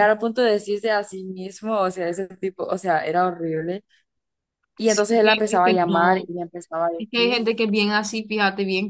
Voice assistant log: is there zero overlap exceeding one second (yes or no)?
no